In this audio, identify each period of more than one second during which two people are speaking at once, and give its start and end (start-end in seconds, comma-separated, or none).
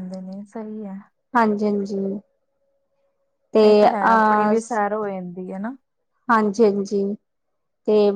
none